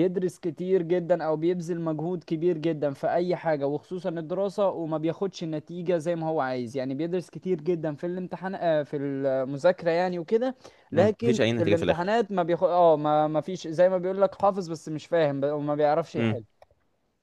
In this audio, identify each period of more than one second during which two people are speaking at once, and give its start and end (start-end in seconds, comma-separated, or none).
10.9-12.2